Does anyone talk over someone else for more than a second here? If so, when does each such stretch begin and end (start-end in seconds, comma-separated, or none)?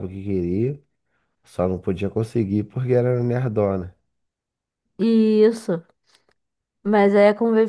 none